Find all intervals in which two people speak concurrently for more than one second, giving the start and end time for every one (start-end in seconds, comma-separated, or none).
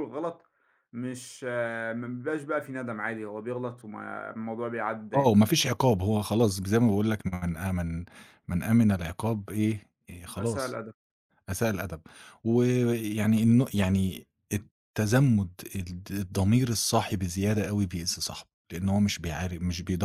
none